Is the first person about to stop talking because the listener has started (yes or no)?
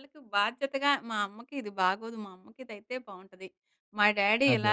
no